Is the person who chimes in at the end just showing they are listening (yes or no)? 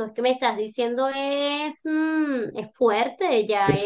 yes